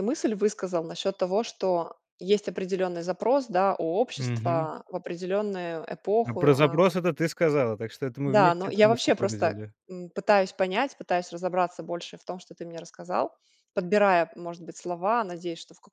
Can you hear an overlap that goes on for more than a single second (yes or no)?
yes